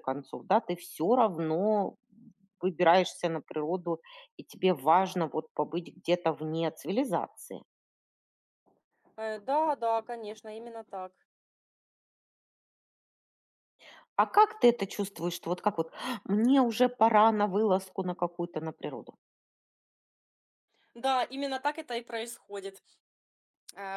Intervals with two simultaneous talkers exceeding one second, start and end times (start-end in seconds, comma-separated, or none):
none